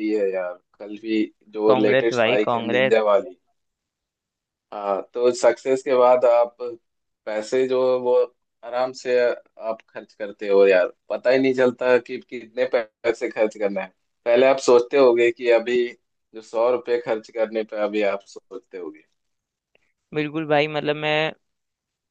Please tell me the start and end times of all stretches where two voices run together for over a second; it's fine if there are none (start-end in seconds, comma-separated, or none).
1.6-2.9